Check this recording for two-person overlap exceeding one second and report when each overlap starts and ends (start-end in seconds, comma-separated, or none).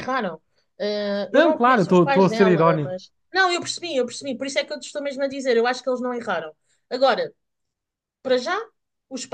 1.3-3.0